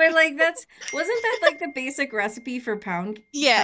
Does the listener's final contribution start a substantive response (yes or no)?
yes